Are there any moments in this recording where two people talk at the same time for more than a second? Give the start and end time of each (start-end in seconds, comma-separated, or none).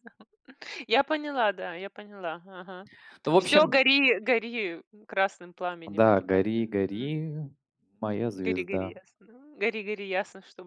5.9-7.1